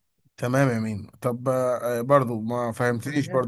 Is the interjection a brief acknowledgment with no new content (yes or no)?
yes